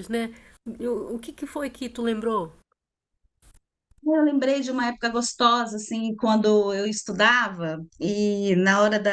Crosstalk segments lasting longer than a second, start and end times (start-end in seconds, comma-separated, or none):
none